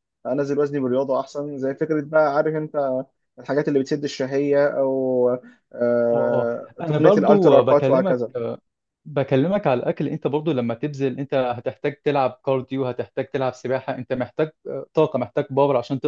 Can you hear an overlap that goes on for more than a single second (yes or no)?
yes